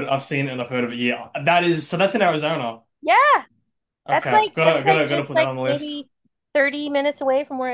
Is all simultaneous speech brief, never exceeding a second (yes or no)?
no